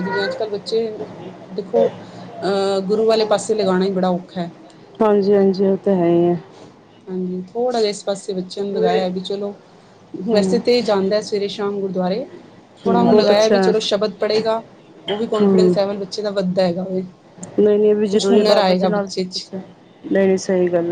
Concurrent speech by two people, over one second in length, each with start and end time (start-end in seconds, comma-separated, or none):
18.1-19.5